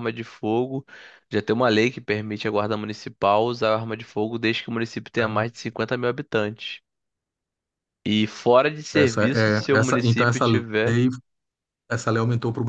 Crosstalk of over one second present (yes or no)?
yes